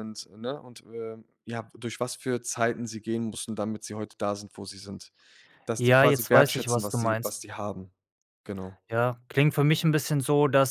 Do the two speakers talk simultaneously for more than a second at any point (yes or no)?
yes